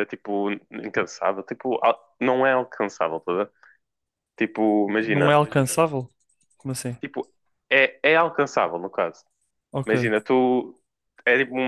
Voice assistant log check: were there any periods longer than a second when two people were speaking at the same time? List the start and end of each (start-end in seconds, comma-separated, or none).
none